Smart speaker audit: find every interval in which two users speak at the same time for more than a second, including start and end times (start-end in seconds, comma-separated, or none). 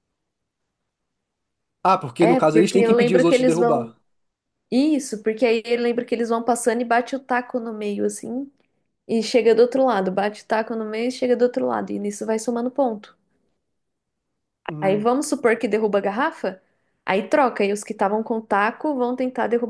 2.2-3.9